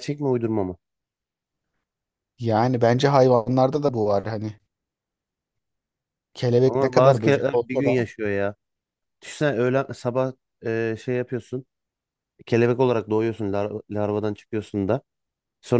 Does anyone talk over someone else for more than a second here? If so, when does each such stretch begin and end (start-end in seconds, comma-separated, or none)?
6.7-8.0